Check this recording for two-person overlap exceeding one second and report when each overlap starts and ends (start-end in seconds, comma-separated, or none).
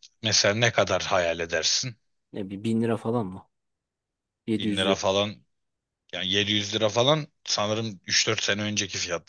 none